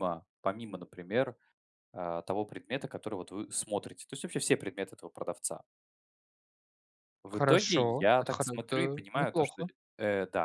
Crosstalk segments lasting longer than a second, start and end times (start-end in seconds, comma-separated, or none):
7.3-9.6